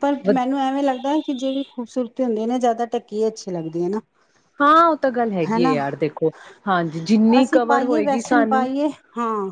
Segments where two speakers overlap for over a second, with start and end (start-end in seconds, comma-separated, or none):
7.4-8.7